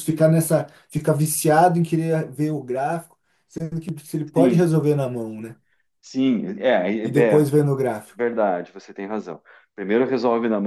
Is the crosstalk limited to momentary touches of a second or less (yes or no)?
yes